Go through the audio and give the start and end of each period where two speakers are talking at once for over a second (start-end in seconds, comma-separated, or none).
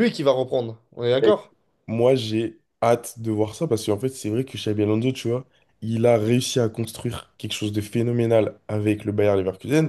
none